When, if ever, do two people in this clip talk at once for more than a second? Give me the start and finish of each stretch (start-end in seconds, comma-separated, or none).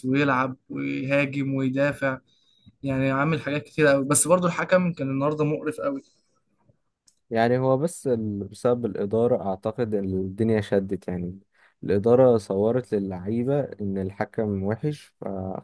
none